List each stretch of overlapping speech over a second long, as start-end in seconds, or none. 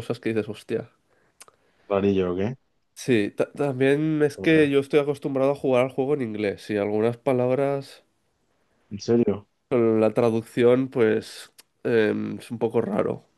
none